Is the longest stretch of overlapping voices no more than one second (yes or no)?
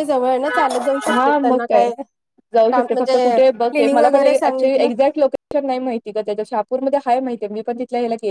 no